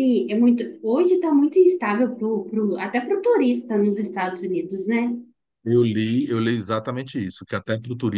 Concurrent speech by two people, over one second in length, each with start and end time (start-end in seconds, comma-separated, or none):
none